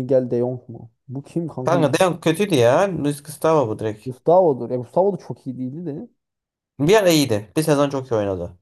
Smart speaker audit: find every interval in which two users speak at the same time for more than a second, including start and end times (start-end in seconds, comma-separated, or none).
none